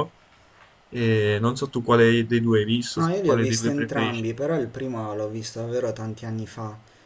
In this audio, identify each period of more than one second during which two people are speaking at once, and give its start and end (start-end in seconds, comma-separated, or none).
2.9-4.3